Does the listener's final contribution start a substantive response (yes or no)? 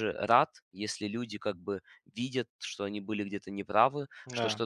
no